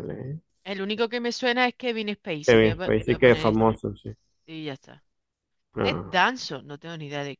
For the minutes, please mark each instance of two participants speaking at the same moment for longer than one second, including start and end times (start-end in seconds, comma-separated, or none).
2.5-3.8